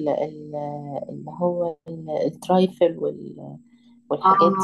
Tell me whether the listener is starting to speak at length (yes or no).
no